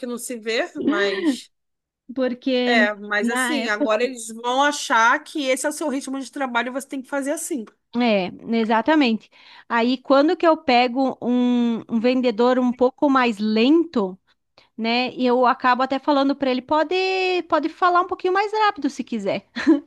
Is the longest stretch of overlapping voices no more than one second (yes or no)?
no